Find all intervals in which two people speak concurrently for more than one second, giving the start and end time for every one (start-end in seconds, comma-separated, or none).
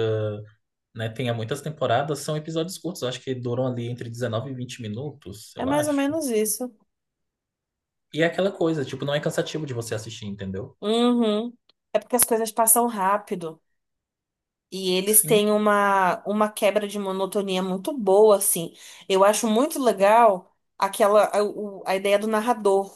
none